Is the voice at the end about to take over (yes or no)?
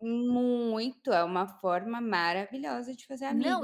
yes